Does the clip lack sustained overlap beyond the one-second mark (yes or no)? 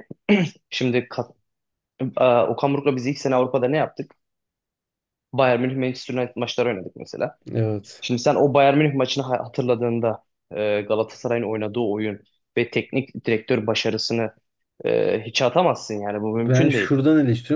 yes